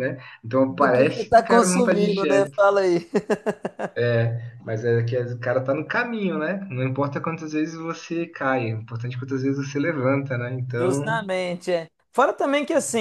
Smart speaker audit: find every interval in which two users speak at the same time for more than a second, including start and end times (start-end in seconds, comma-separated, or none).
0.7-2.6